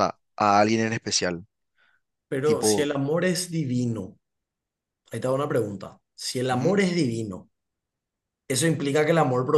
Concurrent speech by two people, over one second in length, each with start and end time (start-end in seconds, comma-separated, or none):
none